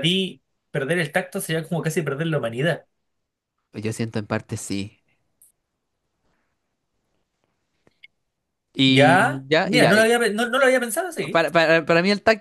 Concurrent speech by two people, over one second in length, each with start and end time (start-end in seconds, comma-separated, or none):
8.9-10.1